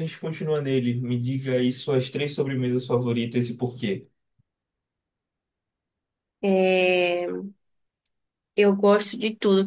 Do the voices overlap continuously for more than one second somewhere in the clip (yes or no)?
no